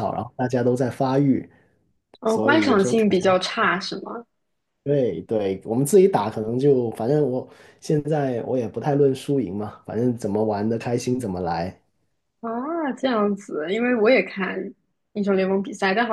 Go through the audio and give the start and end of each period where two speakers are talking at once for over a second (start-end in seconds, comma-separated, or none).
2.2-3.5